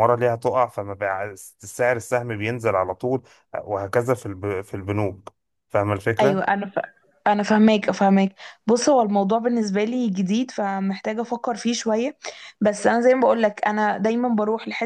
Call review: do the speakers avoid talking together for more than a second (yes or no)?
yes